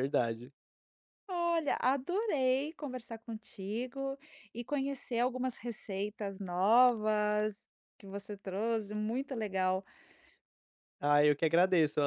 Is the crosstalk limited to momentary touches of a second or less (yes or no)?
yes